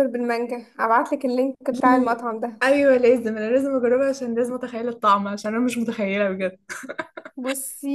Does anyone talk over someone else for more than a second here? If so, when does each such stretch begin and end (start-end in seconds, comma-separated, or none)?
none